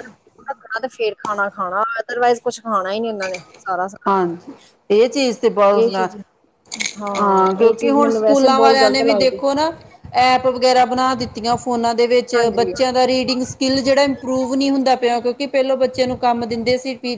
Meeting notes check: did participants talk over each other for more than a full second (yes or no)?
yes